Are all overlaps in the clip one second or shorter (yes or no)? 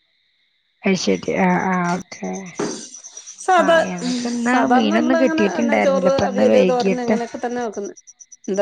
no